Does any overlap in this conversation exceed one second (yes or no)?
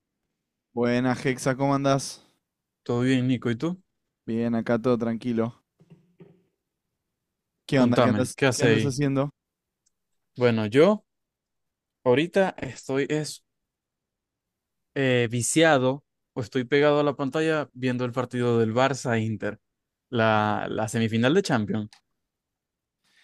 yes